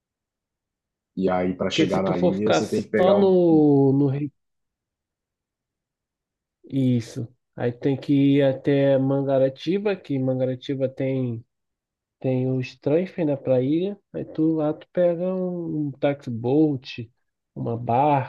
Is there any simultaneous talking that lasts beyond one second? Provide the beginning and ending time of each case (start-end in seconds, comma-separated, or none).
1.7-3.4